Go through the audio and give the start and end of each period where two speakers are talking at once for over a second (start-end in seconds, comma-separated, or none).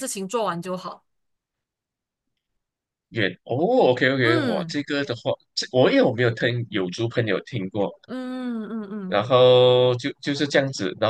none